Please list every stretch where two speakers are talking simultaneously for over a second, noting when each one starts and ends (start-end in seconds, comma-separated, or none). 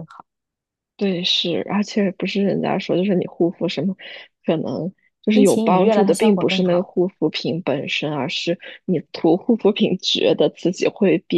5.3-6.9